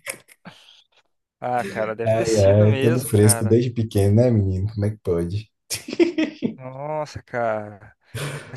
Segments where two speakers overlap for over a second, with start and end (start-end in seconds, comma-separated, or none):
2.0-3.5